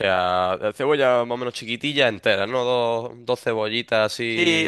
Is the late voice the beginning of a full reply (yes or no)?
yes